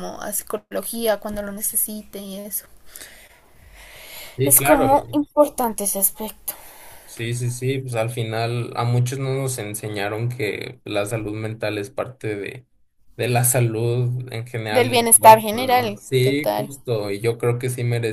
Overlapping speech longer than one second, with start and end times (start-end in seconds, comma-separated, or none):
14.7-16.7